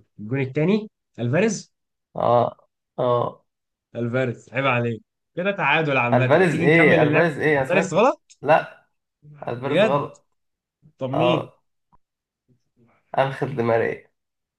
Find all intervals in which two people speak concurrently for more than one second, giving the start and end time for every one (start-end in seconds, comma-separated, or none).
6.1-7.9